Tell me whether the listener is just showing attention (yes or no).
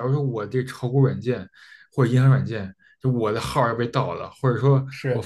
yes